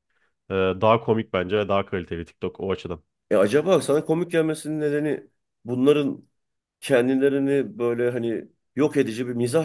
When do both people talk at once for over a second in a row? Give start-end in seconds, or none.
none